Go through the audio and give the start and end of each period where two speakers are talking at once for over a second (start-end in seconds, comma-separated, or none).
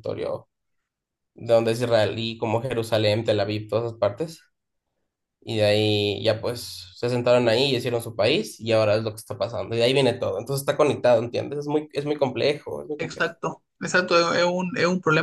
none